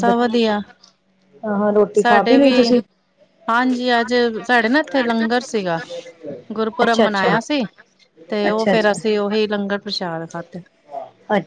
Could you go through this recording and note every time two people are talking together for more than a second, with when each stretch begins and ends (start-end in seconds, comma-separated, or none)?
none